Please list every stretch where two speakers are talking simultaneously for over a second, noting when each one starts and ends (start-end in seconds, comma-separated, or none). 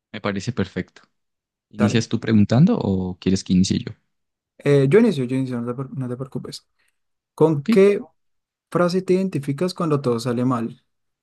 none